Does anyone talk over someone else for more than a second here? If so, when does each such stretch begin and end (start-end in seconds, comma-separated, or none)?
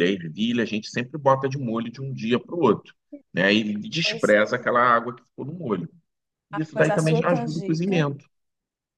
6.5-8.1